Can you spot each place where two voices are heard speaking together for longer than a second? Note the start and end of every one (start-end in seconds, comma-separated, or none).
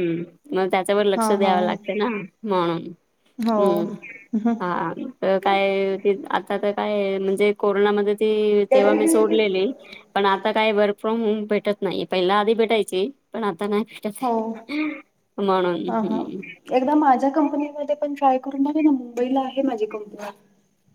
none